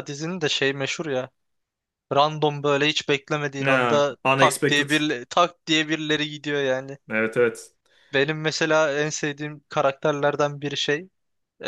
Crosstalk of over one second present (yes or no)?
yes